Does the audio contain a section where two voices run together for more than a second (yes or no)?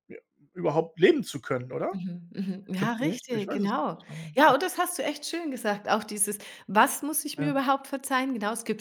yes